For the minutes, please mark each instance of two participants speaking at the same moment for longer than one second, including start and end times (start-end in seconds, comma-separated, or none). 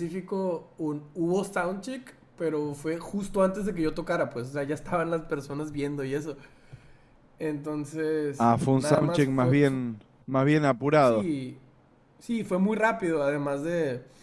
8.4-9.8